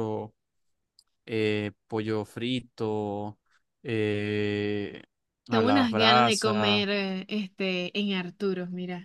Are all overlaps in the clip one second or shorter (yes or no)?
no